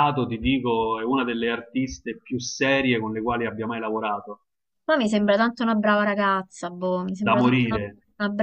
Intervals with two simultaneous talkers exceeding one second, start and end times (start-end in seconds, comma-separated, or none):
none